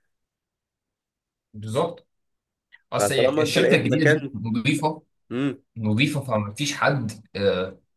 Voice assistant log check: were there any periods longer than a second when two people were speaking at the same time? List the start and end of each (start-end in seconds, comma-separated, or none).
3.0-4.3